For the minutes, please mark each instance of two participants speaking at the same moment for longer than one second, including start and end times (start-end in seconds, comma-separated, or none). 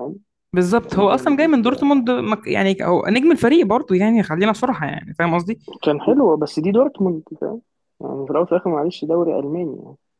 0.7-2.0